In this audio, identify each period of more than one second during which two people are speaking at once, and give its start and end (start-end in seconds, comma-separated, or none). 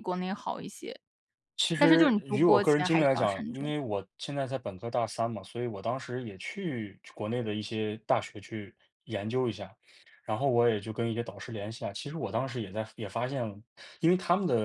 1.8-3.7